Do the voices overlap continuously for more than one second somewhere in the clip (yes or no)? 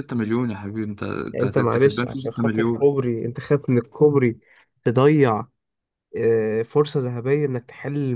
yes